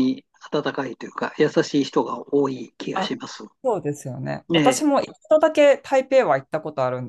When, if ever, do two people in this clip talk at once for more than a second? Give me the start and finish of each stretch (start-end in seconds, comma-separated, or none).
none